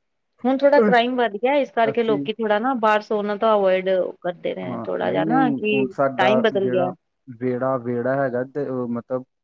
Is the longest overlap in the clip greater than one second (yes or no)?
yes